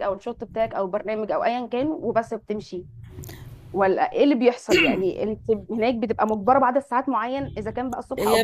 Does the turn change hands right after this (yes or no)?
yes